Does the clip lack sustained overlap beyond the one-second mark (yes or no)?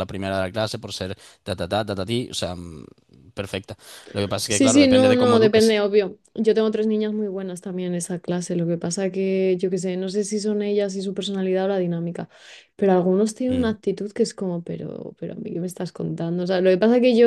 no